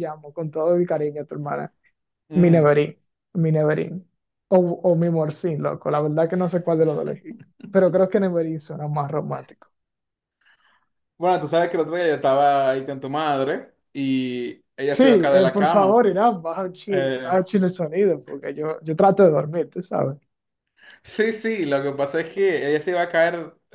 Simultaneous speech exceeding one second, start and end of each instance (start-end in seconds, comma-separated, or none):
14.9-16.1